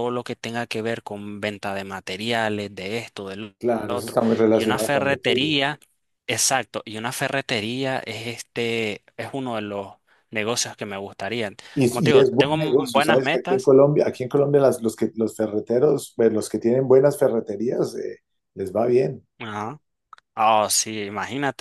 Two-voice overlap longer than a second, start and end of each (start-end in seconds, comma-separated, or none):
3.6-5.5, 11.9-13.7